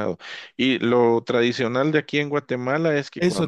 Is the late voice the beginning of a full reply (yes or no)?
yes